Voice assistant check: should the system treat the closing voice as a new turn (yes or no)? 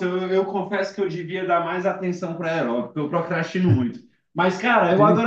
no